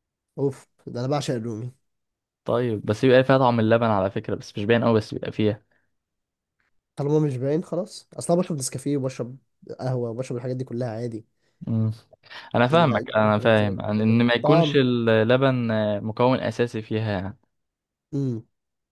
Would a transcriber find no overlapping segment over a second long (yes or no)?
no